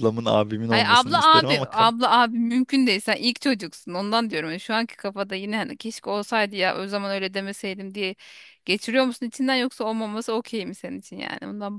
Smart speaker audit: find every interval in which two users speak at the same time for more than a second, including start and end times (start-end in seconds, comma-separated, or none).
0.7-1.9